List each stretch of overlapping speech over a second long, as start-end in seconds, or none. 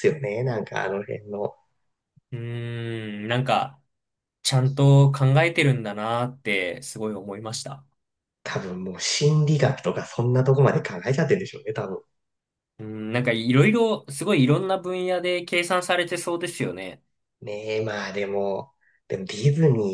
none